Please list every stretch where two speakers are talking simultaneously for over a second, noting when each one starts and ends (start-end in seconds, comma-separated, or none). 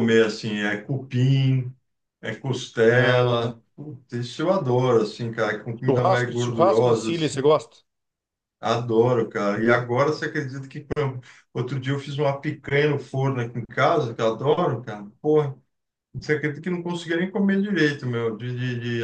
5.9-7.4